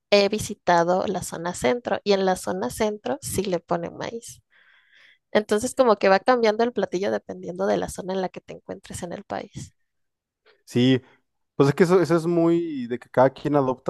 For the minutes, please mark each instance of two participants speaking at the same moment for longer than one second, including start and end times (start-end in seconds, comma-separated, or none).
none